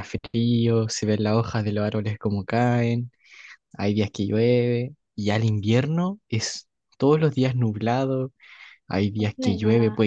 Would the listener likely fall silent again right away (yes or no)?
yes